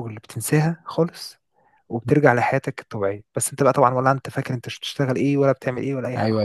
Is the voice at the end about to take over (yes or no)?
yes